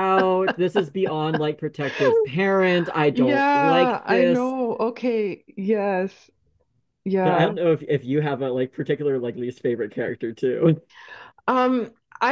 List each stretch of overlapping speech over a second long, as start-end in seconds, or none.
3.1-4.5